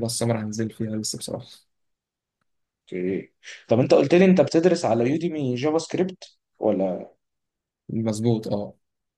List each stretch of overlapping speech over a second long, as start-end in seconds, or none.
none